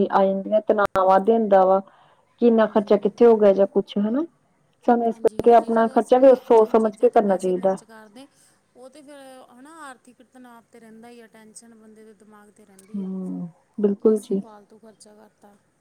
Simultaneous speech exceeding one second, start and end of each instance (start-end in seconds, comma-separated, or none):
5.1-7.7